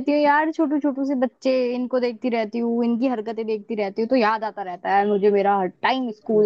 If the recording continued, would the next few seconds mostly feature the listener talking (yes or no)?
no